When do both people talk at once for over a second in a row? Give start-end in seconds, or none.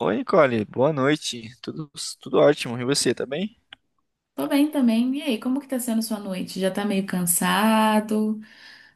none